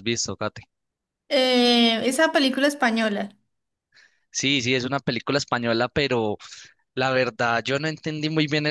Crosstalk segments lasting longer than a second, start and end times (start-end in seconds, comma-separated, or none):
none